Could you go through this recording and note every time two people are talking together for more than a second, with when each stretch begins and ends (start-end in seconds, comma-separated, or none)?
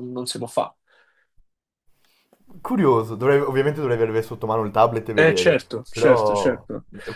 5.2-6.7